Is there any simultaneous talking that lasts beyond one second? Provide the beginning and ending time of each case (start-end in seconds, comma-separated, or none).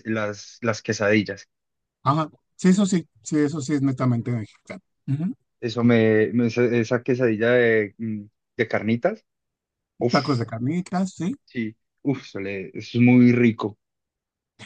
none